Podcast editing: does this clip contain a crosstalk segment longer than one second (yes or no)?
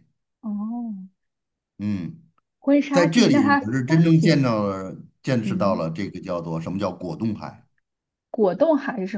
yes